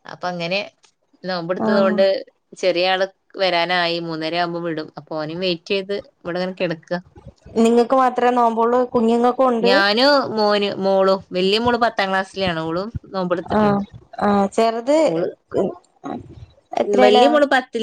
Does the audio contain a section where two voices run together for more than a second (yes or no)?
no